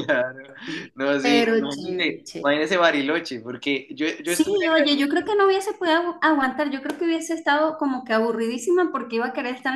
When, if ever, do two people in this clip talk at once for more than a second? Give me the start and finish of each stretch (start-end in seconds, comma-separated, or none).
0.9-2.7